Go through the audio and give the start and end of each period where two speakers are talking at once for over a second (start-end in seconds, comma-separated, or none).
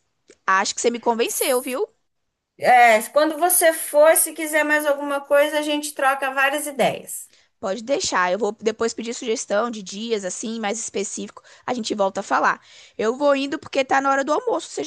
none